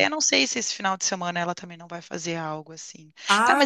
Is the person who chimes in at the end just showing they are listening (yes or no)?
yes